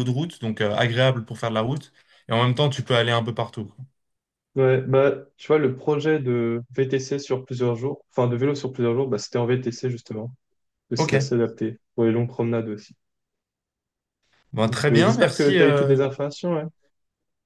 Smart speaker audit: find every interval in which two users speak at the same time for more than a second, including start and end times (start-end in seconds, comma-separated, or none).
14.7-16.0